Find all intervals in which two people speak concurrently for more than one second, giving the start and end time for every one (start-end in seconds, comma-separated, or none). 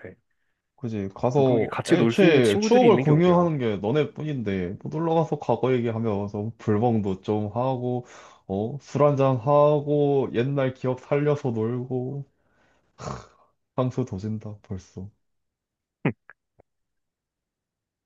1.4-3.5